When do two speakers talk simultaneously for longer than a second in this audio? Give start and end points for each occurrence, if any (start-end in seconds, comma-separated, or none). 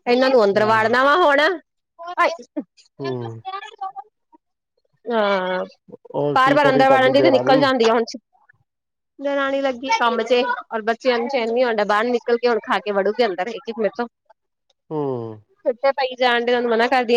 6.3-7.6